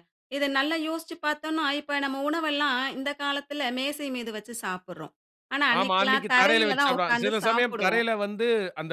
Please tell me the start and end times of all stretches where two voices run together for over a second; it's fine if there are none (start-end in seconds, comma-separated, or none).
5.8-8.0